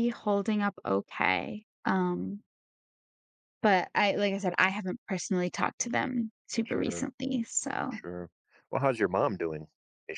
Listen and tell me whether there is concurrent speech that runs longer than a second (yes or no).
no